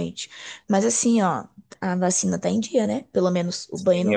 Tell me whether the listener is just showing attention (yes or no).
no